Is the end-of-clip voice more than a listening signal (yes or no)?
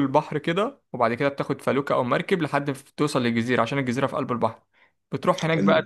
no